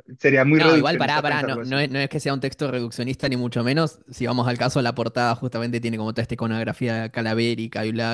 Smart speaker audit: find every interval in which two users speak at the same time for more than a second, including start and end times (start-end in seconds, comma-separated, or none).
0.5-1.8